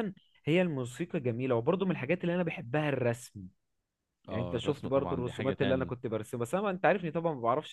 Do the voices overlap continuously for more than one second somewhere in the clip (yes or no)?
yes